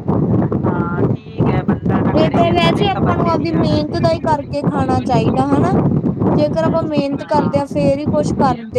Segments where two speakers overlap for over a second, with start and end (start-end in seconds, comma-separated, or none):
2.2-4.1